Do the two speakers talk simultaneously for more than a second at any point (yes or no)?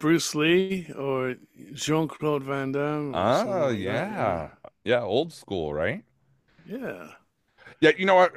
yes